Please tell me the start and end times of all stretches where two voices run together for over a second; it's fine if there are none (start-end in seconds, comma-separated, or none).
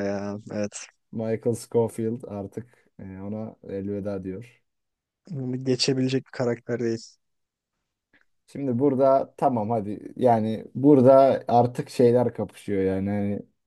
none